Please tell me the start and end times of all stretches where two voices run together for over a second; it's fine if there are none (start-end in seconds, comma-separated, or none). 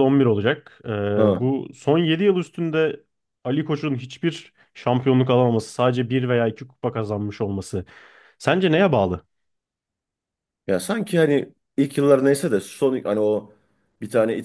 none